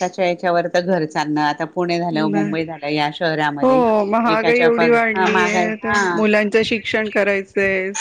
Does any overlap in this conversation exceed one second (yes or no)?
yes